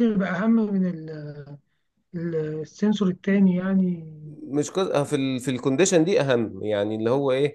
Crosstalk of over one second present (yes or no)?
no